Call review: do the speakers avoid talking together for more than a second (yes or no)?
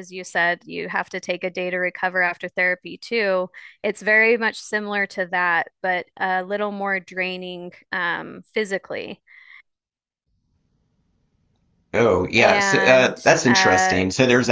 no